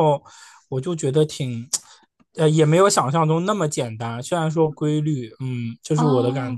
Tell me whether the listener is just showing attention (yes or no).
no